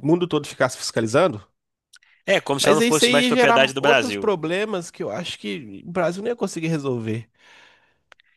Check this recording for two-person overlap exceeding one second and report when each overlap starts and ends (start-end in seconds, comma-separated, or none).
2.6-4.3